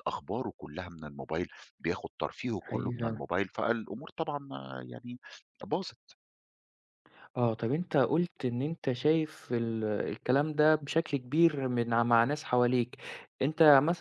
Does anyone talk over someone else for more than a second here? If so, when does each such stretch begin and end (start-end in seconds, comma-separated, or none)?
none